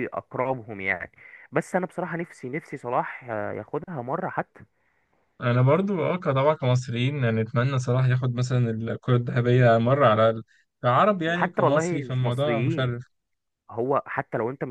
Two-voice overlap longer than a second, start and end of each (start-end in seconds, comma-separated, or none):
11.3-12.9